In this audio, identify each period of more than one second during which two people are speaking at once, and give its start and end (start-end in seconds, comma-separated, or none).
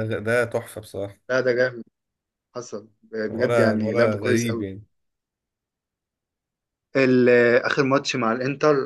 3.3-4.6